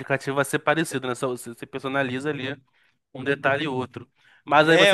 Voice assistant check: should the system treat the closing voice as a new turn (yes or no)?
no